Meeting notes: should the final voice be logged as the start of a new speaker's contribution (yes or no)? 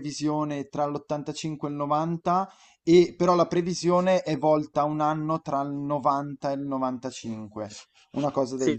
yes